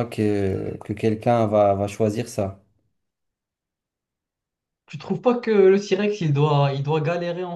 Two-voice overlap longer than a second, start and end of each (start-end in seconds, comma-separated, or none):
none